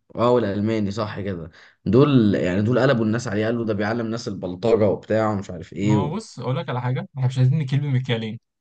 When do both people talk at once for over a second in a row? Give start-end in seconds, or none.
none